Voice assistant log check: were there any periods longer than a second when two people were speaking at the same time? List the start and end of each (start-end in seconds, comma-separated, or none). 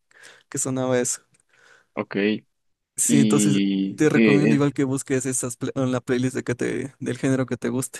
3.1-4.7